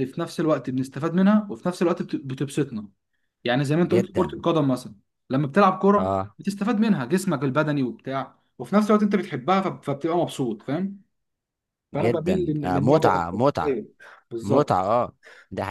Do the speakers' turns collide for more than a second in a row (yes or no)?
yes